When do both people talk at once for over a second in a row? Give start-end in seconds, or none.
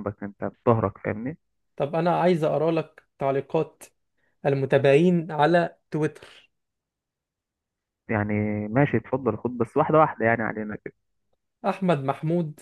none